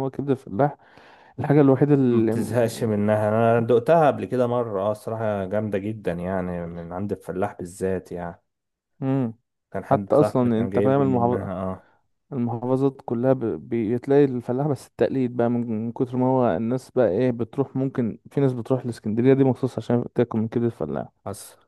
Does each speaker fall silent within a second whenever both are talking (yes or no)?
no